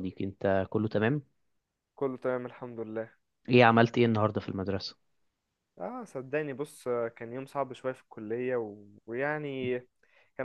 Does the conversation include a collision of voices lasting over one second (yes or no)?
no